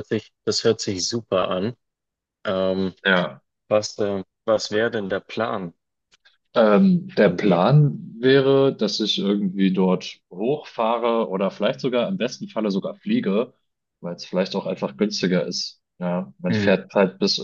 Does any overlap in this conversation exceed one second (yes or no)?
no